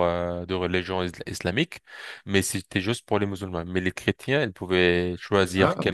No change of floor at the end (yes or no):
yes